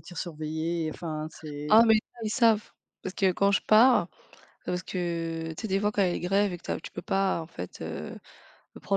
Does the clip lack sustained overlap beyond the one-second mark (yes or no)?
yes